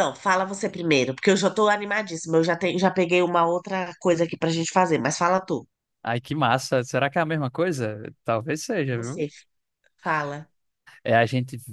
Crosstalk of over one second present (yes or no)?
no